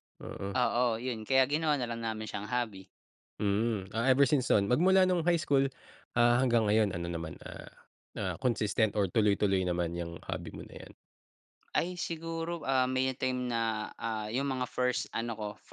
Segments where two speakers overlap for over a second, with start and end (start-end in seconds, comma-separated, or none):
none